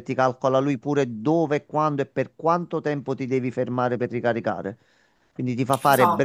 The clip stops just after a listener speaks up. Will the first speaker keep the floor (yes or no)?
yes